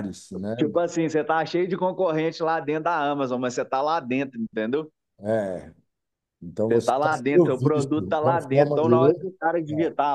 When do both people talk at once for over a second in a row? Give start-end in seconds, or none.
6.7-9.3